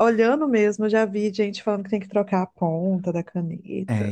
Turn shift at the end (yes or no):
yes